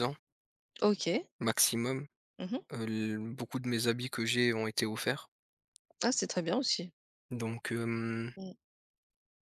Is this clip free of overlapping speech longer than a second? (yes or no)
yes